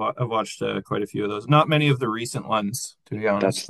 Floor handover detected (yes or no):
yes